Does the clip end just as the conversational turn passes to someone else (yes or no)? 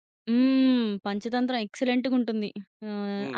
yes